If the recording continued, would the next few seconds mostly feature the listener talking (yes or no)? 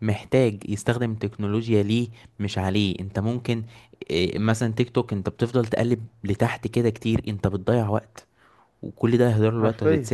no